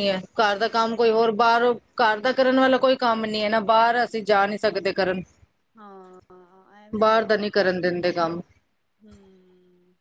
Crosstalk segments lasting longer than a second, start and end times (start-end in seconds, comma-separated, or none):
none